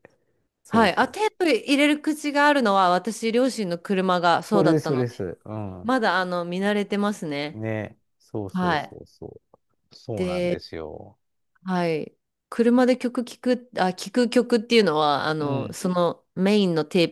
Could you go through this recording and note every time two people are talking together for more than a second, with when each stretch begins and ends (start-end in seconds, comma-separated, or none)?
none